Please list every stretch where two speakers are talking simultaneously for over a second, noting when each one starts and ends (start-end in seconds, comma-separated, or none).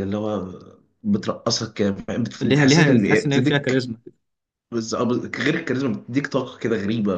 2.4-3.8